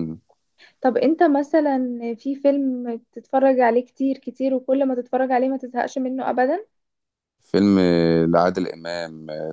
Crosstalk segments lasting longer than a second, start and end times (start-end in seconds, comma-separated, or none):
none